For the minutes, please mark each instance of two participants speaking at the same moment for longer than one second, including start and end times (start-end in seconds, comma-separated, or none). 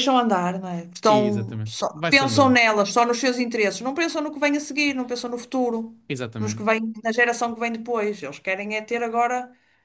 1.1-2.6